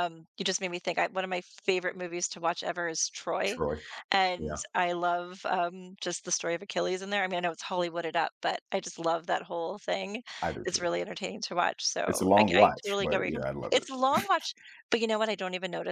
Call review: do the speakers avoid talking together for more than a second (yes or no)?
no